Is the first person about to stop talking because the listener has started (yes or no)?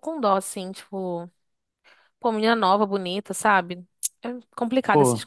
no